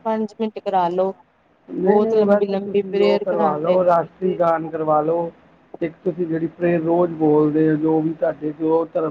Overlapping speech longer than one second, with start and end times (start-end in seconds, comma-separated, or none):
1.8-3.8